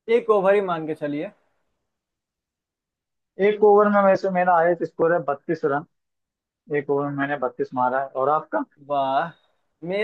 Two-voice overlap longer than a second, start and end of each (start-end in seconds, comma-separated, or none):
none